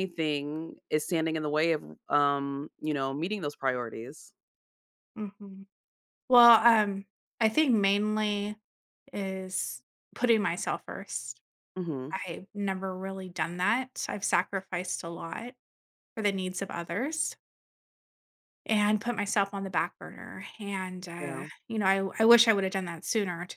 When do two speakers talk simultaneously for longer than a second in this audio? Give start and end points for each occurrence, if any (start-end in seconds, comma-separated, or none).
none